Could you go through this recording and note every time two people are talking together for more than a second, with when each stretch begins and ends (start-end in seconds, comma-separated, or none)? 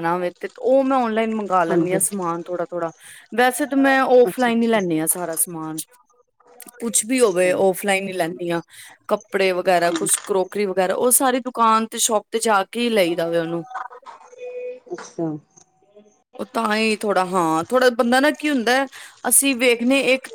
none